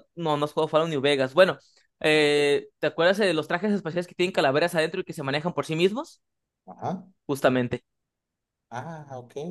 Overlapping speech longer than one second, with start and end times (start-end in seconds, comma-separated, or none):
none